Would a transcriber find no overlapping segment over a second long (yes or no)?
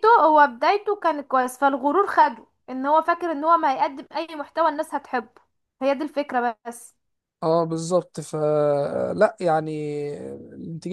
yes